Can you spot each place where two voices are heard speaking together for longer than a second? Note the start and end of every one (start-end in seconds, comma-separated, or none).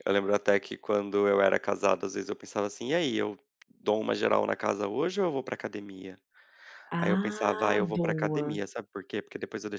7.0-8.6